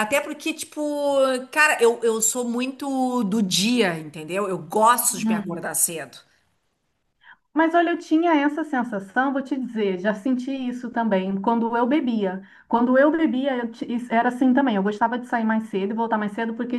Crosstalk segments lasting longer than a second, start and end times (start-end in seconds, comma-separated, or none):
none